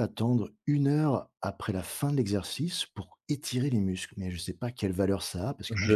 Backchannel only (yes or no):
no